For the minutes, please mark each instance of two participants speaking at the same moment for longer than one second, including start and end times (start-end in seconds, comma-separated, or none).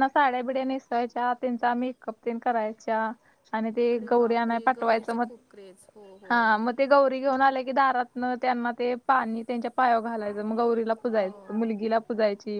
3.8-5.3